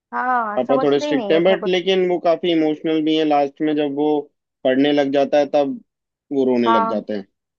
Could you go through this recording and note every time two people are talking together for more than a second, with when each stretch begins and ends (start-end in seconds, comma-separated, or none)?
0.6-1.8